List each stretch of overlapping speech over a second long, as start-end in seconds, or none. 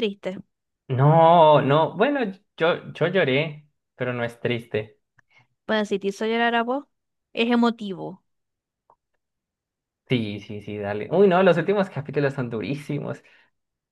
none